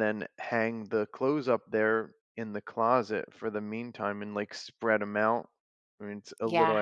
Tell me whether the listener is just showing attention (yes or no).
no